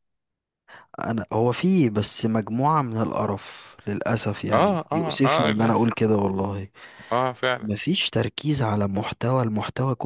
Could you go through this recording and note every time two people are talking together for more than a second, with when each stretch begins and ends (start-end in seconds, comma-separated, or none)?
4.5-5.7